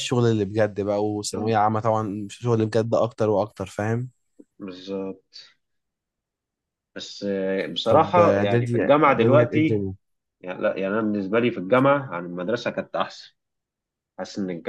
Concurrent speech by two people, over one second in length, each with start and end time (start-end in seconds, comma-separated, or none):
7.9-9.8